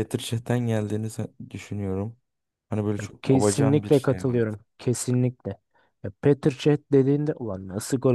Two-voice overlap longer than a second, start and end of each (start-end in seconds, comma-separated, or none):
3.0-4.4